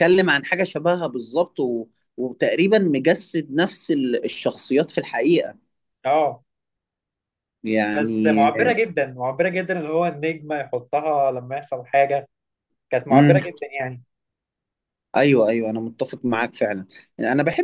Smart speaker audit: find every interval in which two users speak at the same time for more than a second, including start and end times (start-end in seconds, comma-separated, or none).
none